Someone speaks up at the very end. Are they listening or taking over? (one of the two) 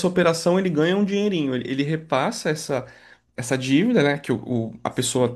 listening